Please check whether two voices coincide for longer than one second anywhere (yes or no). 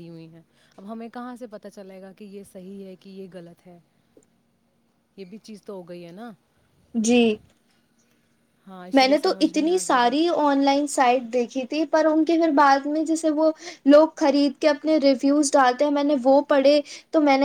yes